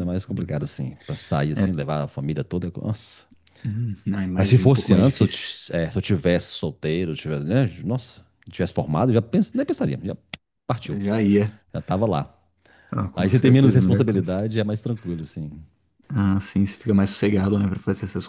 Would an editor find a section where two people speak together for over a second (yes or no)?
yes